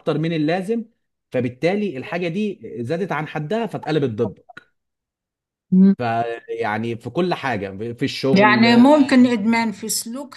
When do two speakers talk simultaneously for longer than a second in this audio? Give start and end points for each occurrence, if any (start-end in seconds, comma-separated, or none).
none